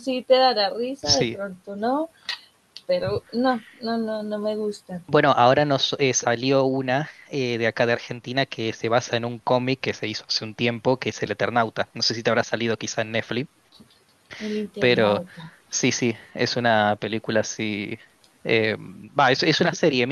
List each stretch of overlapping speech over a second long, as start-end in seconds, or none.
none